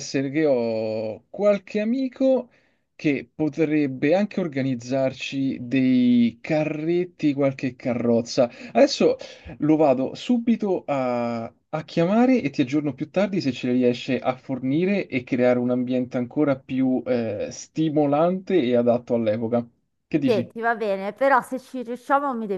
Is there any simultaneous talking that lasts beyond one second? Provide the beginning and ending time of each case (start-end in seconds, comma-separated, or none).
none